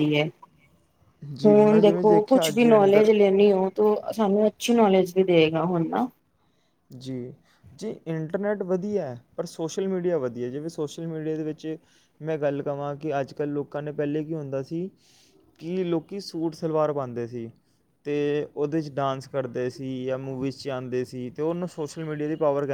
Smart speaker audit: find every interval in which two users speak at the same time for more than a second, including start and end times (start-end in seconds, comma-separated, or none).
1.4-3.1